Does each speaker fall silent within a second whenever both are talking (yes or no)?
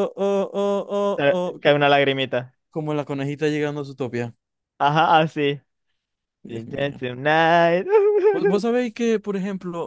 yes